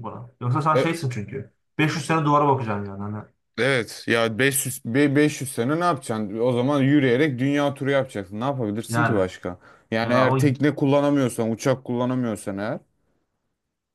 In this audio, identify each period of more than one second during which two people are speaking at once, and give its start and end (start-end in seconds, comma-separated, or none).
none